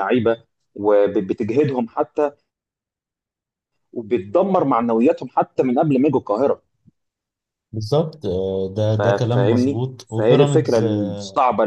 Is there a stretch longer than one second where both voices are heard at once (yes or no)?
yes